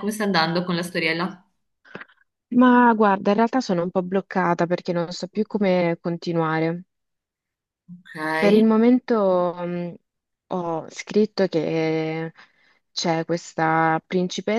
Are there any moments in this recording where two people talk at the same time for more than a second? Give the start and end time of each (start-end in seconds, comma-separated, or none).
none